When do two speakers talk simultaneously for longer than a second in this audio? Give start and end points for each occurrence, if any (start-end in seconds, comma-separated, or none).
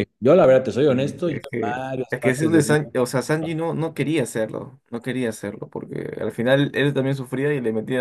0.9-2.6